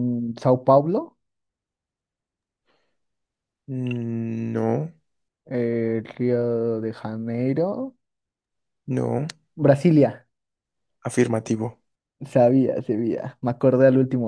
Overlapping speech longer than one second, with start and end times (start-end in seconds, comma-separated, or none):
none